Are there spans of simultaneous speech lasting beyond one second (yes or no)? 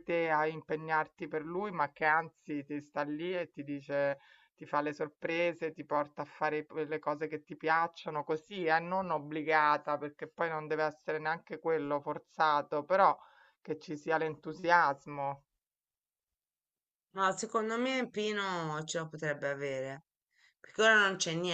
no